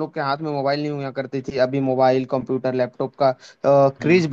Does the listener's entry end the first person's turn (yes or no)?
no